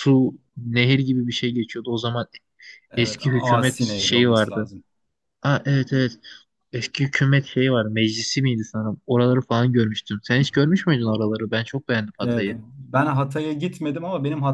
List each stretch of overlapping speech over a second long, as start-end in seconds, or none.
3.0-4.7